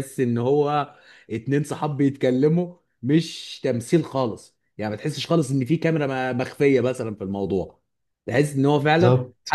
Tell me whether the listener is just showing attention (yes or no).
yes